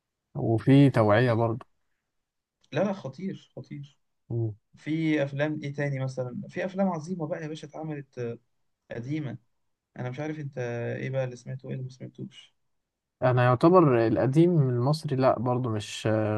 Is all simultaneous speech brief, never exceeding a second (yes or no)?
yes